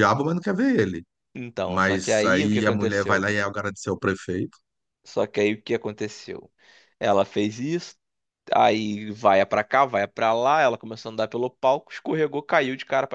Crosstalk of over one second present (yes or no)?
yes